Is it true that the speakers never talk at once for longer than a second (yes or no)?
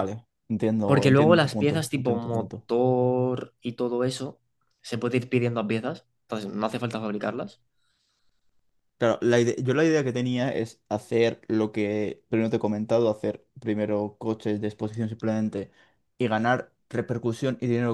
no